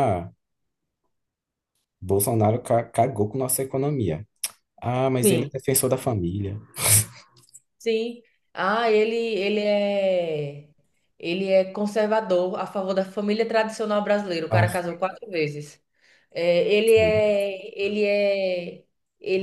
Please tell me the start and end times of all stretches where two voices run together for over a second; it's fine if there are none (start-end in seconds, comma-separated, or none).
none